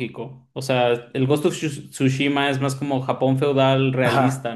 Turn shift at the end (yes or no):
yes